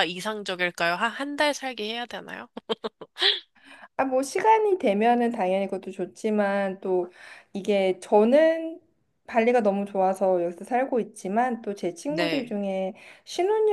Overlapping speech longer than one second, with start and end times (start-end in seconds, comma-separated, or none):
none